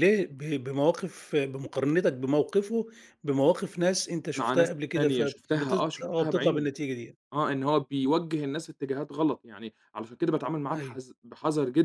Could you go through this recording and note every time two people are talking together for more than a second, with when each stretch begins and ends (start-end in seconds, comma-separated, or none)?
4.4-6.7